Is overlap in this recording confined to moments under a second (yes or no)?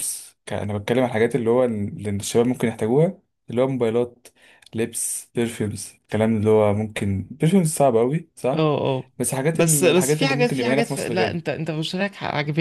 no